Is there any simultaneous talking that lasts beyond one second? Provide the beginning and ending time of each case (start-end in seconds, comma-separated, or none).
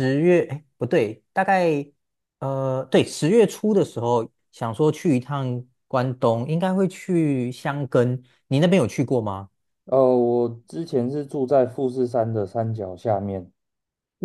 none